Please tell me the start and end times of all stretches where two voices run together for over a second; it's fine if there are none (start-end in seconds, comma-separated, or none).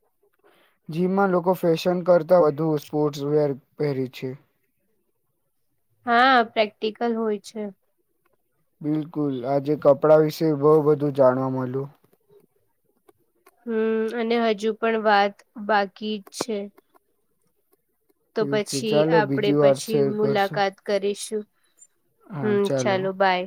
18.3-20.6